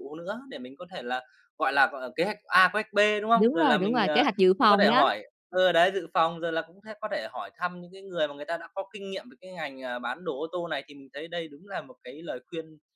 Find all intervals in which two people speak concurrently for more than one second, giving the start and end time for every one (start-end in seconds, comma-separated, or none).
3.4-5.1